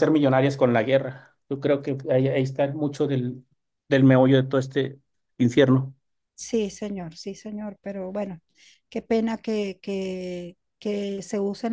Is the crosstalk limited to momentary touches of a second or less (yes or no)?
yes